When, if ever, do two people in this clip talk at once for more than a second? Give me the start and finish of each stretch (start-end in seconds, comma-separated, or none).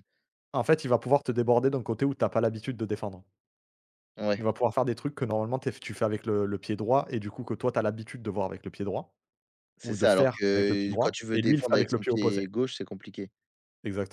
9.8-12.4